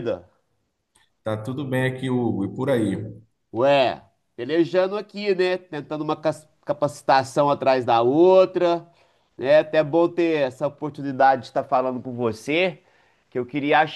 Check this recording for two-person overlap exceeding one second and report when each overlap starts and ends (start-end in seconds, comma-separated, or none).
none